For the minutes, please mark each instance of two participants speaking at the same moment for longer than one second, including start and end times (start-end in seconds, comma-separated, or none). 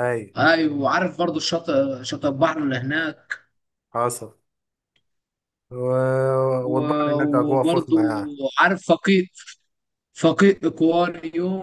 6.7-8.0